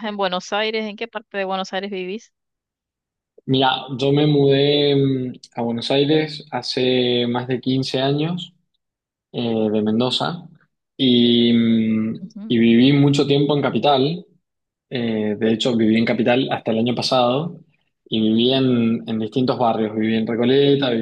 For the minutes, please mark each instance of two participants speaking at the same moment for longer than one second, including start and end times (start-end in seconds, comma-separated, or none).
none